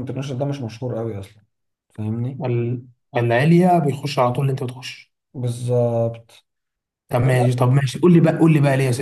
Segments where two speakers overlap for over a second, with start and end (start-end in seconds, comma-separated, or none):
none